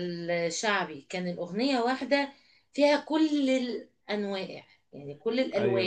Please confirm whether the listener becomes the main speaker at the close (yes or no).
yes